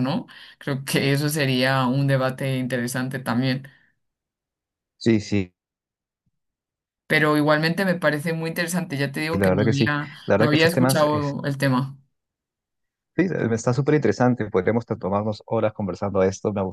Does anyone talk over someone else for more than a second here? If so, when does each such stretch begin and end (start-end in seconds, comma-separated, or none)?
9.3-11.3